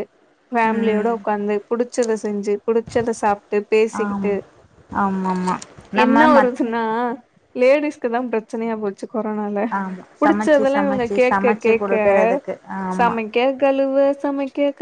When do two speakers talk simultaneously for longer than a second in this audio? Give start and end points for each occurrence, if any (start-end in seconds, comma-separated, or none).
10.2-11.9